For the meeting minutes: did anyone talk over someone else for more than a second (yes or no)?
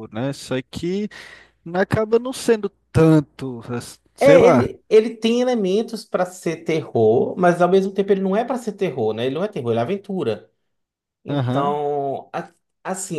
no